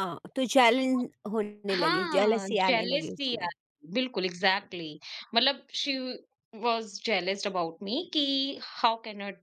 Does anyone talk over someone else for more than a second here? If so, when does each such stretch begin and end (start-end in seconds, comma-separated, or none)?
1.7-3.5